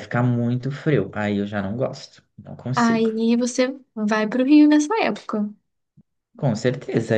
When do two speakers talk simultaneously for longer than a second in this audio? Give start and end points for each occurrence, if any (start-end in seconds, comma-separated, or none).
none